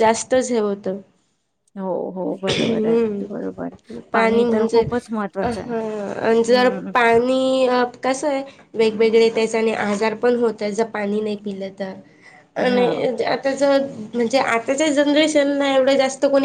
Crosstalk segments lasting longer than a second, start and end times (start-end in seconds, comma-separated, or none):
2.5-3.8